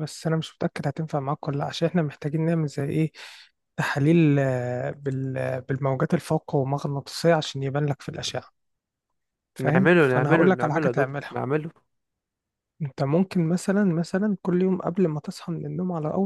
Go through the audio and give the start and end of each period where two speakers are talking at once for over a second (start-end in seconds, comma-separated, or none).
9.6-11.4